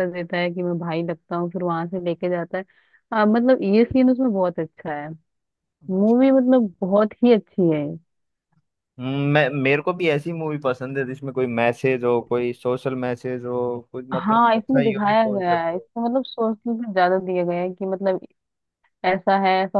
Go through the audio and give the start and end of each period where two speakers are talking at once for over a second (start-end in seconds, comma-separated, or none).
14.1-15.9